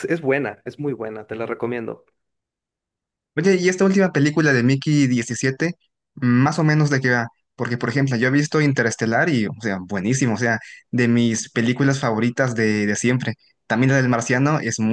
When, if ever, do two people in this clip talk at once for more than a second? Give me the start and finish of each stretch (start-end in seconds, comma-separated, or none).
none